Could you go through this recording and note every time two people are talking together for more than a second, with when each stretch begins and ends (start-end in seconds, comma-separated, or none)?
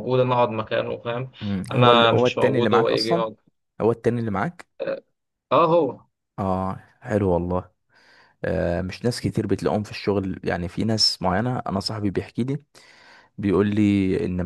1.7-3.2